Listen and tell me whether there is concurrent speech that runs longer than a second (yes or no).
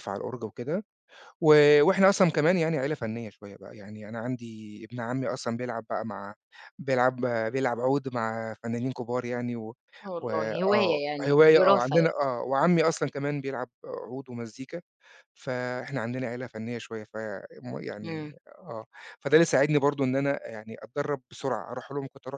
yes